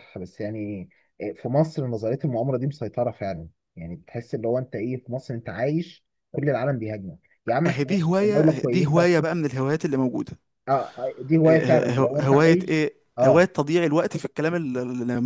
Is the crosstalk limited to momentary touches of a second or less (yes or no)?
no